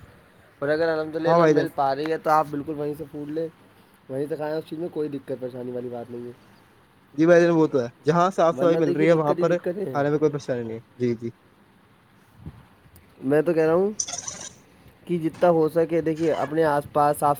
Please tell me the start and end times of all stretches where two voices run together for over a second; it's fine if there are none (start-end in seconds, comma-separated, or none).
8.6-10.0